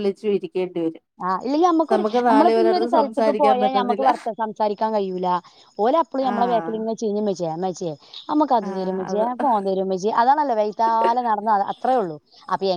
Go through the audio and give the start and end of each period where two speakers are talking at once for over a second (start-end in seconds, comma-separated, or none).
2.6-4.1